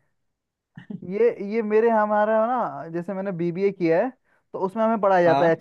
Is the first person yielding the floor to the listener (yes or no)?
no